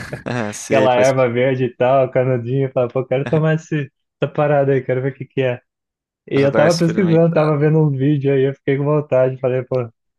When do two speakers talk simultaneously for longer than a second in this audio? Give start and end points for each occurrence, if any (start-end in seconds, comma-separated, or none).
6.3-7.7